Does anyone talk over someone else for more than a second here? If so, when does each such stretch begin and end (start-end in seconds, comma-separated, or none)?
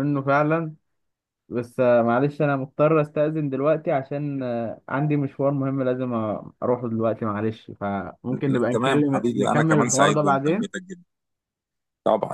8.3-10.7